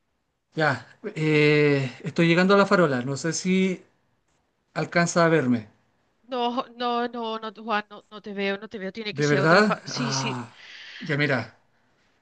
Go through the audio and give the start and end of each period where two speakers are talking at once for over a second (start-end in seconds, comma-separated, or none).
9.1-10.4